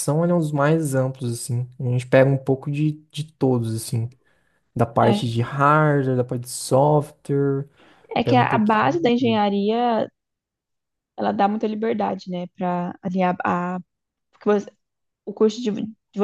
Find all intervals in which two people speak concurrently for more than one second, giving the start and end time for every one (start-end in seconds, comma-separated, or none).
8.2-9.4